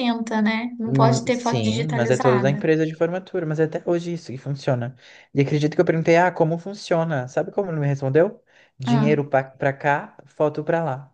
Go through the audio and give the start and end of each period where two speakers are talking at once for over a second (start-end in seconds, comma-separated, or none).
0.8-2.7